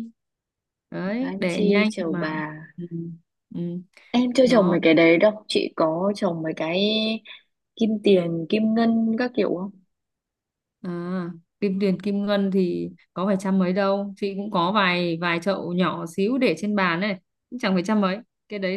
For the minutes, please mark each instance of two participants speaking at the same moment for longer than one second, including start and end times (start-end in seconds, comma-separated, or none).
1.0-2.4